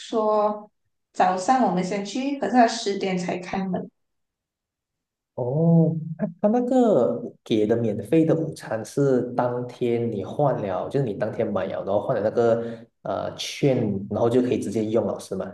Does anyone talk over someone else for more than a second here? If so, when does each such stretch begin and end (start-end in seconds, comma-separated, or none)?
none